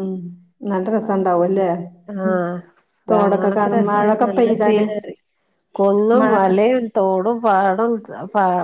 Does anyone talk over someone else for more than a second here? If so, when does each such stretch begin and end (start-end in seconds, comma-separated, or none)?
3.1-4.9